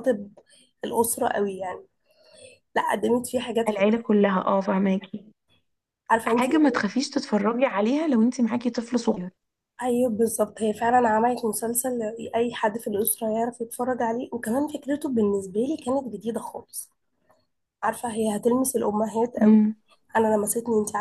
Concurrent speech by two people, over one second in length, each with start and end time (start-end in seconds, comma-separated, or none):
none